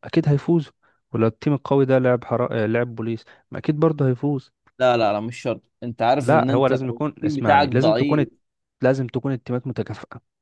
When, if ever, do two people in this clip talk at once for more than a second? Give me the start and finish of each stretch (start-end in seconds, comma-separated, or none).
6.2-8.3